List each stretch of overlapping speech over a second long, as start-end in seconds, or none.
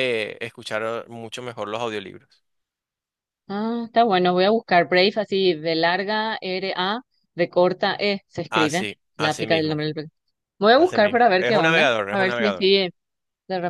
8.5-9.8, 10.8-12.6